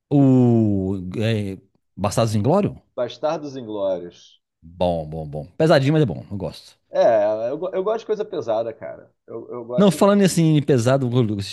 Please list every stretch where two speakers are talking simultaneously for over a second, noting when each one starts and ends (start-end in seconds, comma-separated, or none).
none